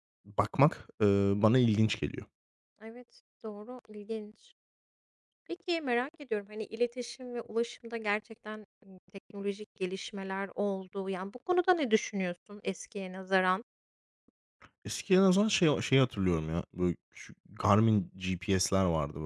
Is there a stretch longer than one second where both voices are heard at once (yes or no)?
no